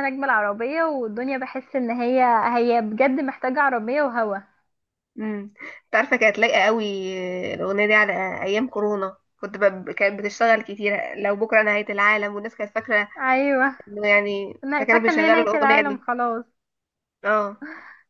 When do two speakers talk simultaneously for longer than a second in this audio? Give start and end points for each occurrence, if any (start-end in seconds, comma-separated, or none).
14.6-16.0